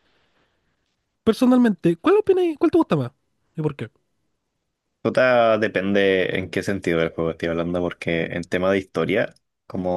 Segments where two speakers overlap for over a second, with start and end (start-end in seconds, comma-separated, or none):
none